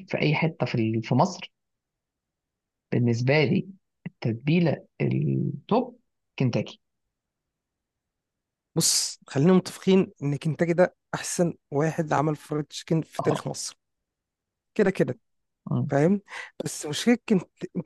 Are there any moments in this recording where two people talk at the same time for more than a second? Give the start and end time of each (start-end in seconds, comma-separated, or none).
none